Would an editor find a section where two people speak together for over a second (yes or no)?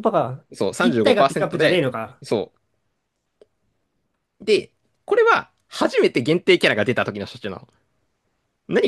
yes